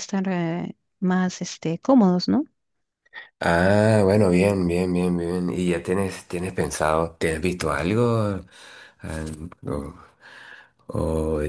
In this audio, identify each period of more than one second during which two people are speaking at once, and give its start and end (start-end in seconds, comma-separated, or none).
none